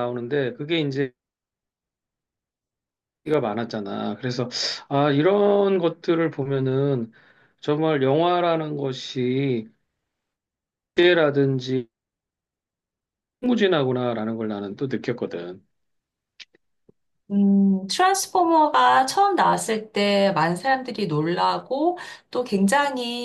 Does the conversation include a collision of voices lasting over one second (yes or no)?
no